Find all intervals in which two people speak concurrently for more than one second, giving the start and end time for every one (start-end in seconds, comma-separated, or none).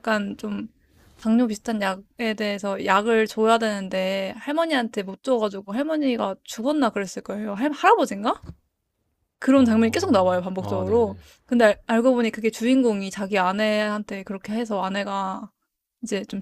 9.6-11.1